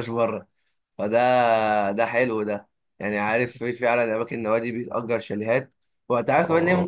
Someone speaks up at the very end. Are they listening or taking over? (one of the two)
listening